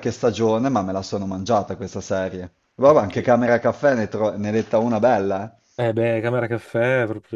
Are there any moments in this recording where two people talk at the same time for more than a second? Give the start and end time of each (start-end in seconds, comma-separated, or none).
none